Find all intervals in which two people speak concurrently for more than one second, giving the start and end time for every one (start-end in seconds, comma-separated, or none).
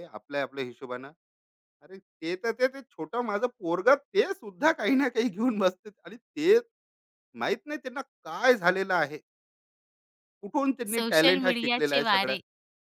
10.9-12.3